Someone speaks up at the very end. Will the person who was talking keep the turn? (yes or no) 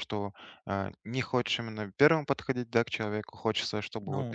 yes